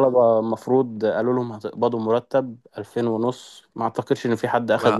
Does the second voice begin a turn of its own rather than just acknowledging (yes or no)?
yes